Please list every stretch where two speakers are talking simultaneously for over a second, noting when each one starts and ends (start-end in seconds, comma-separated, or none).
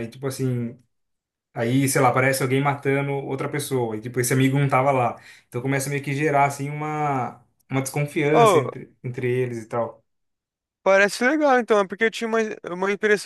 none